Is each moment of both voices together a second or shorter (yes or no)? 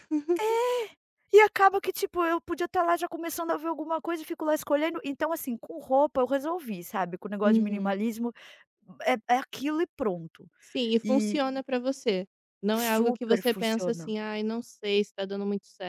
no